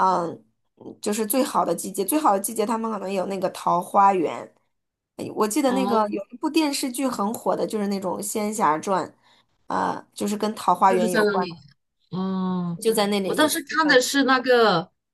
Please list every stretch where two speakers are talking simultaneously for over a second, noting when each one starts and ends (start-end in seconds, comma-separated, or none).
none